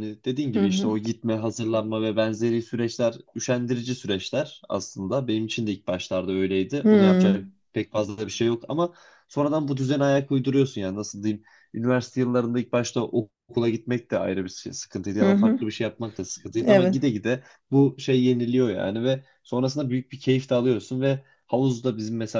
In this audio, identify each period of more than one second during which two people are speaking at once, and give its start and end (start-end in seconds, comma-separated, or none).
none